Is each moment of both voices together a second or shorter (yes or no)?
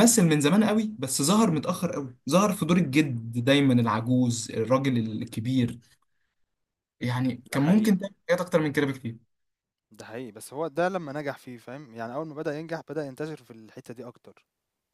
yes